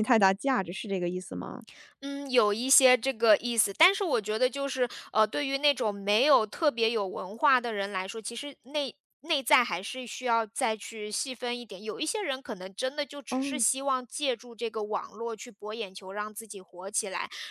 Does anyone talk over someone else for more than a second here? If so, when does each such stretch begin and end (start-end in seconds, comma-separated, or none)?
none